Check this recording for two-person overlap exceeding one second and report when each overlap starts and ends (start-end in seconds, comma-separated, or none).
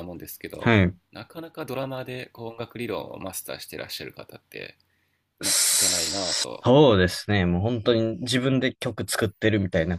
none